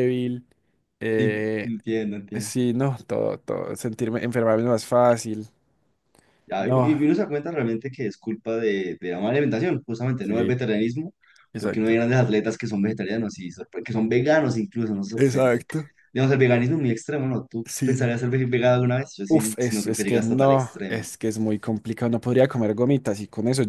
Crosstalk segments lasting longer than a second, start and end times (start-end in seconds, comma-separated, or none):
19.3-21.1